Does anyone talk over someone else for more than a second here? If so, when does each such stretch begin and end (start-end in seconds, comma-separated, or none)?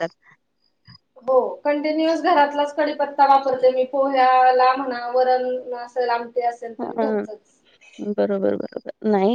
none